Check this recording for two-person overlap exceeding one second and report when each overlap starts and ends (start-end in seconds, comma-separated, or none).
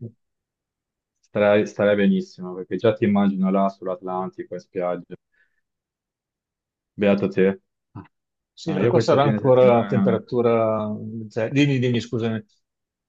8.7-10.2